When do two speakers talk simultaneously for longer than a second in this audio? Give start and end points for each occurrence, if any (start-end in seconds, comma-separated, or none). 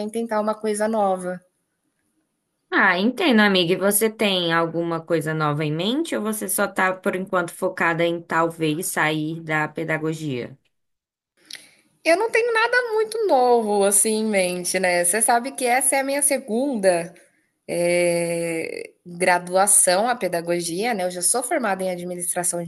none